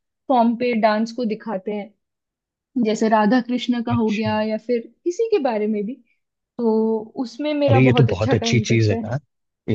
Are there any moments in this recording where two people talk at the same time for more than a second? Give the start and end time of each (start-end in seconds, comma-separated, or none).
7.7-9.1